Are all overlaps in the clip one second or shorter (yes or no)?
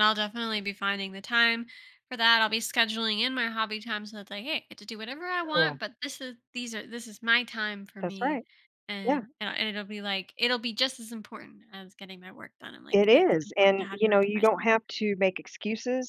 no